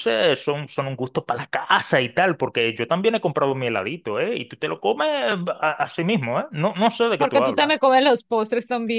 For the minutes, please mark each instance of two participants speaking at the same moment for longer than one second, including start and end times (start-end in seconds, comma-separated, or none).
none